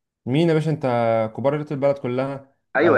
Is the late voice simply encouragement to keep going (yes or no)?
no